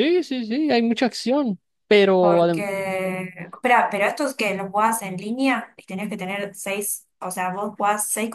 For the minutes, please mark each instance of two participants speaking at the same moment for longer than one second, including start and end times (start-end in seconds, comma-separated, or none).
none